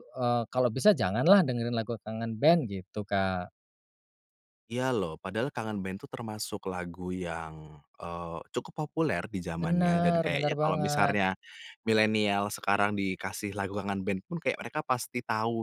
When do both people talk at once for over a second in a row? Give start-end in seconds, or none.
9.6-11.2